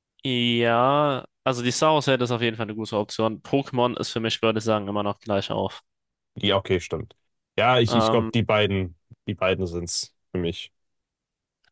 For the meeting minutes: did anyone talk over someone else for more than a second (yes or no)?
no